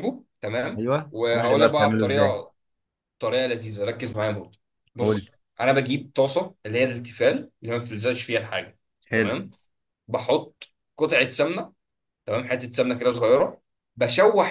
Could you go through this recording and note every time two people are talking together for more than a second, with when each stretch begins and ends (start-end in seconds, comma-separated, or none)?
0.8-2.4